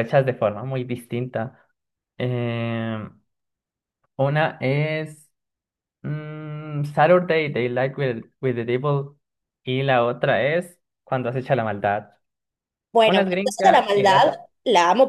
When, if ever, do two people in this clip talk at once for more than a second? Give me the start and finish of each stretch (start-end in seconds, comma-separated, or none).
13.0-14.4